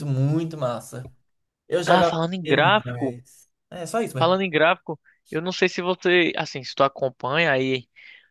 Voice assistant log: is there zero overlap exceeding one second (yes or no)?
no